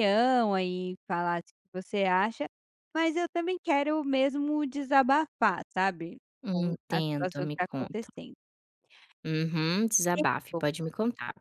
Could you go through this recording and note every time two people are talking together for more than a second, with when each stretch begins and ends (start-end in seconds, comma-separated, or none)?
6.4-8.1